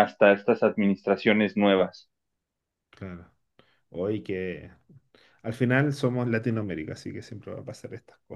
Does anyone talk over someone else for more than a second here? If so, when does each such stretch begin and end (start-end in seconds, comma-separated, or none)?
none